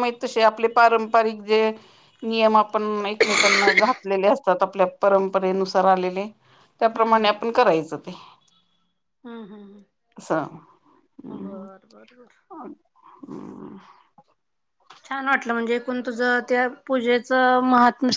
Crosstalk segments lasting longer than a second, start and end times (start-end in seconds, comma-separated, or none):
none